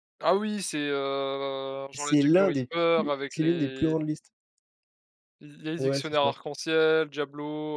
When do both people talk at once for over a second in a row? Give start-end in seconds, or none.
1.9-3.9